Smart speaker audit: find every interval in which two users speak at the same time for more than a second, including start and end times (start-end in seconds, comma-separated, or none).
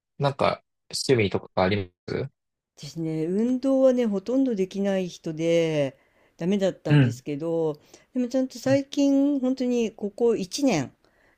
none